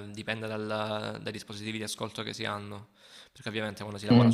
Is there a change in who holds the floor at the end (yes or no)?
no